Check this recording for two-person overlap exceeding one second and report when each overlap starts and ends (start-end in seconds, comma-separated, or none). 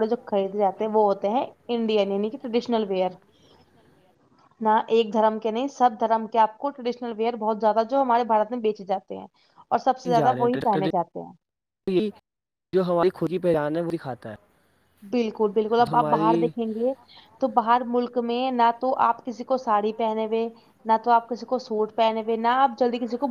none